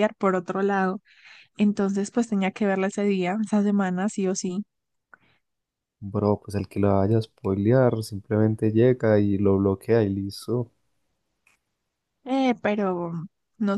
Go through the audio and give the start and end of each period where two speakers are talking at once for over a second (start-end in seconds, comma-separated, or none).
none